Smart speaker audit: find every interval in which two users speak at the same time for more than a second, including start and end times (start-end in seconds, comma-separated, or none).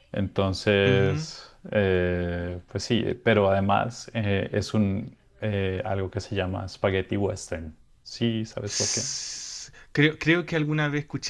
none